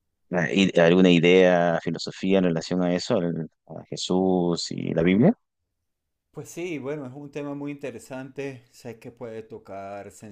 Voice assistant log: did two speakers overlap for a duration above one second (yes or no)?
no